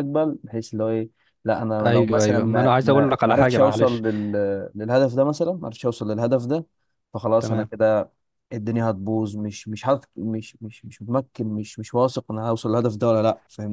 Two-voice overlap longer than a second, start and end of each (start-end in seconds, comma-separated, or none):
1.8-4.0